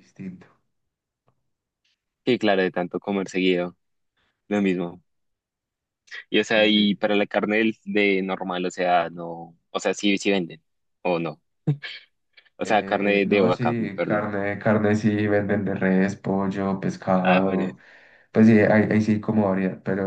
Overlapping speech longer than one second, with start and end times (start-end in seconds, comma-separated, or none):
12.6-14.3